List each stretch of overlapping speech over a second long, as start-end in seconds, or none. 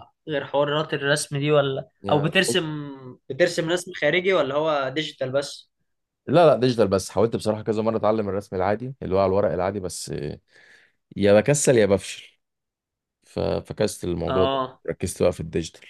none